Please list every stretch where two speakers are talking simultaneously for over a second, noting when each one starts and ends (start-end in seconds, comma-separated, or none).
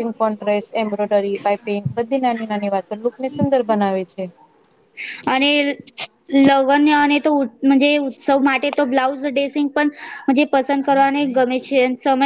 none